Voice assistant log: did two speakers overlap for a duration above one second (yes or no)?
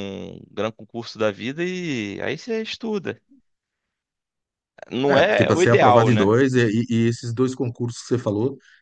yes